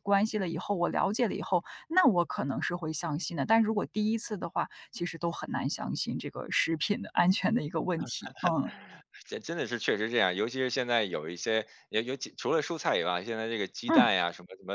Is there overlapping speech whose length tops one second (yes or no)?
no